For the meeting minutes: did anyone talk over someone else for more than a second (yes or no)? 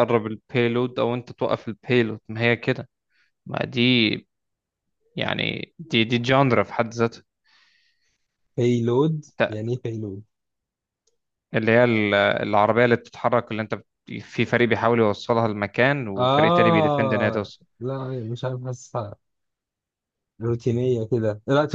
yes